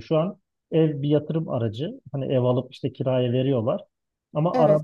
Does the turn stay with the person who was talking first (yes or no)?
yes